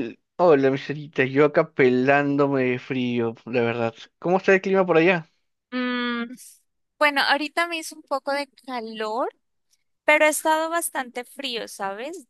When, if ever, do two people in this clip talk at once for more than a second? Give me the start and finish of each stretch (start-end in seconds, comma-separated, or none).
none